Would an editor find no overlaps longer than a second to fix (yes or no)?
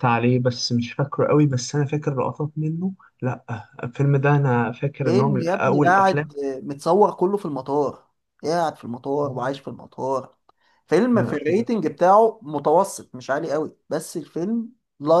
no